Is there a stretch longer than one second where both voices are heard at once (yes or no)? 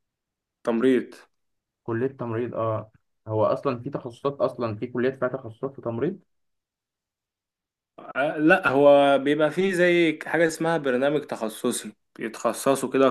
no